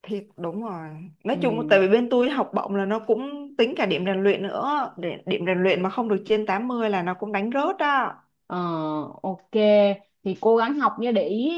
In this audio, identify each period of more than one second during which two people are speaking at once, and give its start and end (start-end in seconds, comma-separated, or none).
none